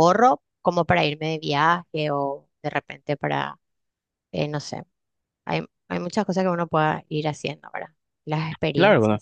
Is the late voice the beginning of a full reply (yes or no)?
yes